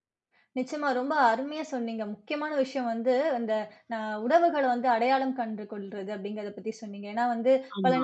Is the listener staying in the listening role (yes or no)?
yes